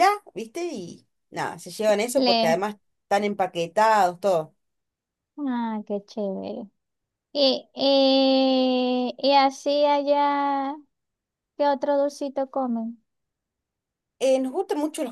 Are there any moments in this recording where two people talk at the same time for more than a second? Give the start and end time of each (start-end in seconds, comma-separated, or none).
none